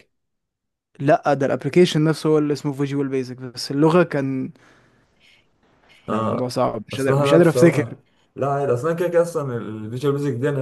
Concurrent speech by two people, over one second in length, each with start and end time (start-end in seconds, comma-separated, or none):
6.1-8.0